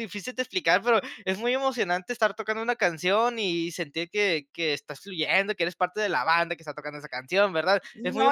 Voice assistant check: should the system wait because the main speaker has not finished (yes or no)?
no